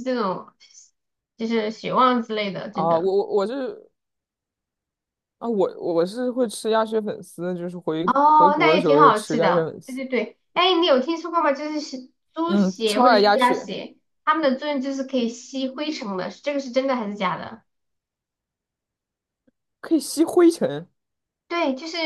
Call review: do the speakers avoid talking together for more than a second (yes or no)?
no